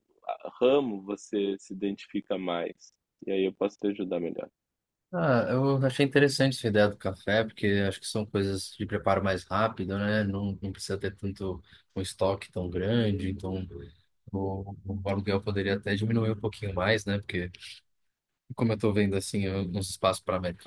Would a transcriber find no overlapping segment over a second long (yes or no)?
yes